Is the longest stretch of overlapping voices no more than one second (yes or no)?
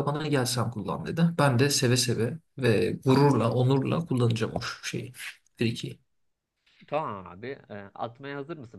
yes